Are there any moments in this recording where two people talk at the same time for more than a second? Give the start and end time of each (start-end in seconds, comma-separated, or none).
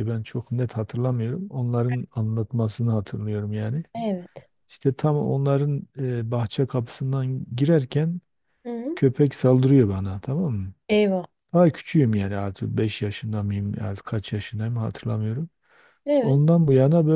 none